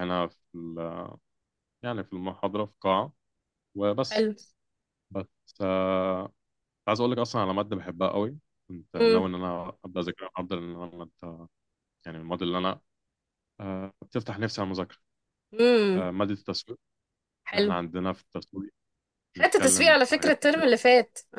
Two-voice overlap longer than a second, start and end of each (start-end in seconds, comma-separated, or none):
19.4-20.6